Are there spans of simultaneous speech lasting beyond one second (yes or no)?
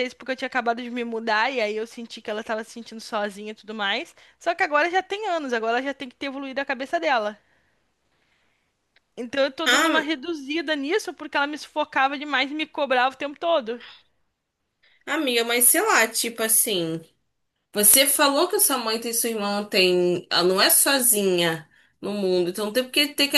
no